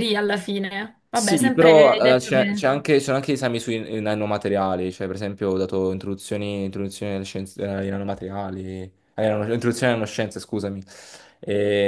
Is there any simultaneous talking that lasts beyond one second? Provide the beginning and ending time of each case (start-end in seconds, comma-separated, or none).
1.1-2.6